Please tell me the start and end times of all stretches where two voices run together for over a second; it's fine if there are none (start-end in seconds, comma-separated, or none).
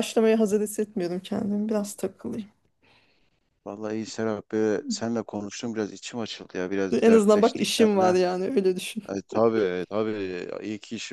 6.9-8.2